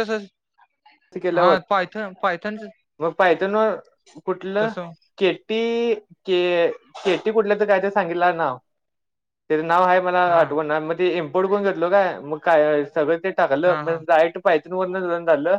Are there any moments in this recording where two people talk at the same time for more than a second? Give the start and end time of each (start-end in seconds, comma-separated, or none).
none